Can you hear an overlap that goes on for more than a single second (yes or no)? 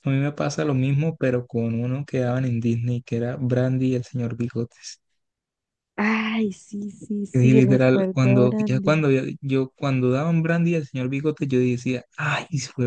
yes